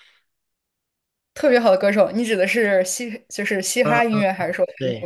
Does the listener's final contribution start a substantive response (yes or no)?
yes